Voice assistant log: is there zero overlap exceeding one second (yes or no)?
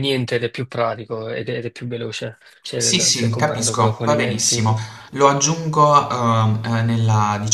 no